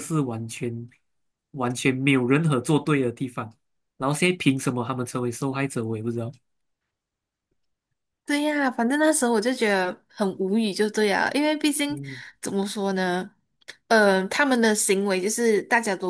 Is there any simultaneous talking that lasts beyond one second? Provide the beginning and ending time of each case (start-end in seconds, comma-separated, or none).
none